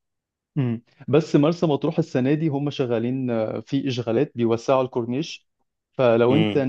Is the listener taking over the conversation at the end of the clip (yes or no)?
no